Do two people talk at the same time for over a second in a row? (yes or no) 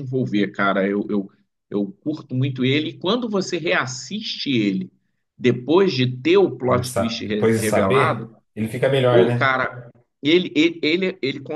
yes